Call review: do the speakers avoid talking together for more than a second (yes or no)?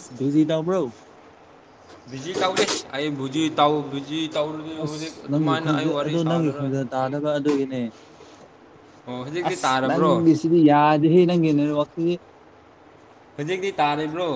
no